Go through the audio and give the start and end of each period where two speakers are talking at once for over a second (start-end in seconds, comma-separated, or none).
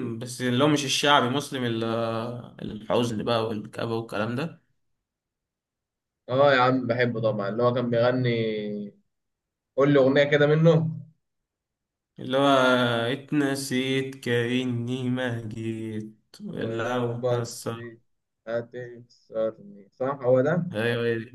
16.5-17.7